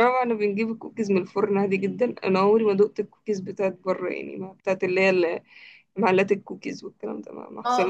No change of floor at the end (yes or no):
no